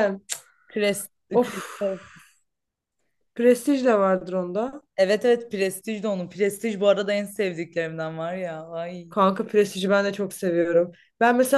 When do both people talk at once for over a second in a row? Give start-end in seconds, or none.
none